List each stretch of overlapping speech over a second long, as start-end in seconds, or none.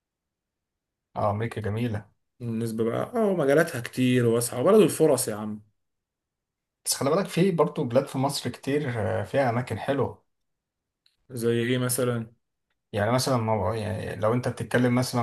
none